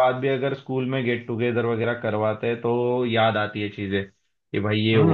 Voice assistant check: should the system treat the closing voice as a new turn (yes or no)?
yes